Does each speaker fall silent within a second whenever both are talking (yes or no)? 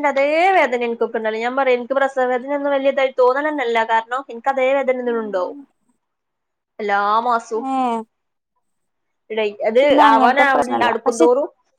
no